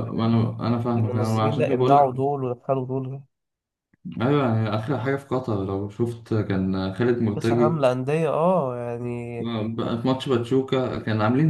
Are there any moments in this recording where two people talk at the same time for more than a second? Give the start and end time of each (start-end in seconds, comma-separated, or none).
0.9-2.1